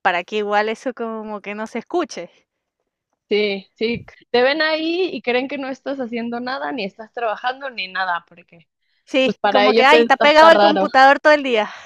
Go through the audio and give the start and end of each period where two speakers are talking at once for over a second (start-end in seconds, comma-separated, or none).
9.2-10.9